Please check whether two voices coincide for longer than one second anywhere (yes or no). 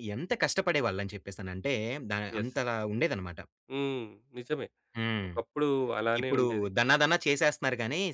no